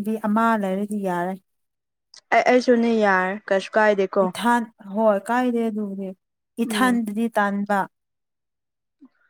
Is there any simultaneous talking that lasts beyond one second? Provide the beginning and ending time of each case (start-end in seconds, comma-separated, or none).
none